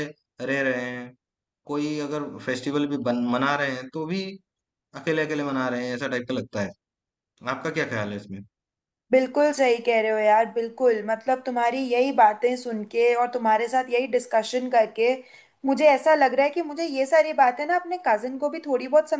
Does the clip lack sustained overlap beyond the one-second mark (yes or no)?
yes